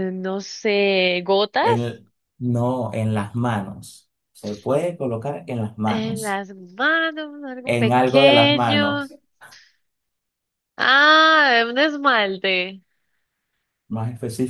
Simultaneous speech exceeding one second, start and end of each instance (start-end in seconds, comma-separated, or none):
7.6-9.1